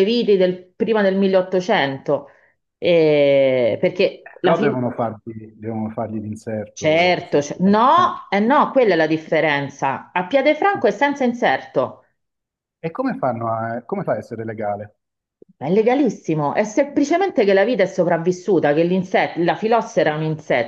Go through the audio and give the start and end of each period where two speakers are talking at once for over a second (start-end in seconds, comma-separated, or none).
6.7-8.2